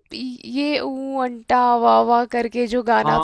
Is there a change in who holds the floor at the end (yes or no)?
yes